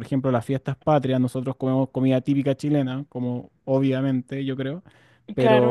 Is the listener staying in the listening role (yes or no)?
yes